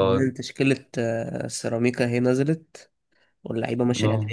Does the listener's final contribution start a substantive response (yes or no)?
no